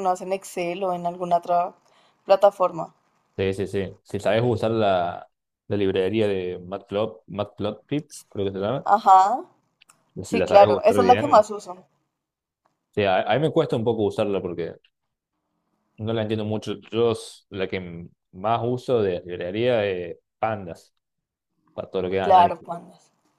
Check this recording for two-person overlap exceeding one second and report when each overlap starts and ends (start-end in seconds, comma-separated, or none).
10.2-11.5